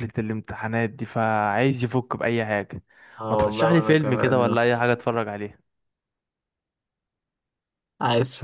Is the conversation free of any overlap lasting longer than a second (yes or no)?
no